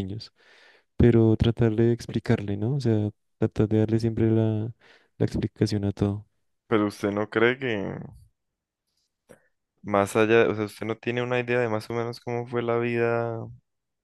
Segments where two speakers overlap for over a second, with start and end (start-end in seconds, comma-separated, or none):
none